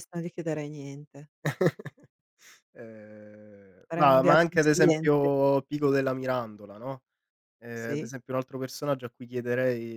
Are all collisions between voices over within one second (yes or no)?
no